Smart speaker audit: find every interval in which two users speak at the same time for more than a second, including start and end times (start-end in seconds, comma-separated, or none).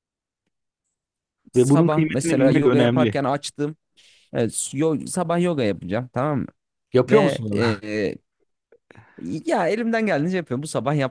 1.6-3.2